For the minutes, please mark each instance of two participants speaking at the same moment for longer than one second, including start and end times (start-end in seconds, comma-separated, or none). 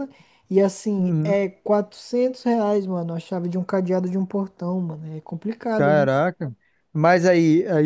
none